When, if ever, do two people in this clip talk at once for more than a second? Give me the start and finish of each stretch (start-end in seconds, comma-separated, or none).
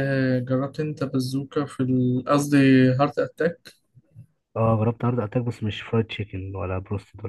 none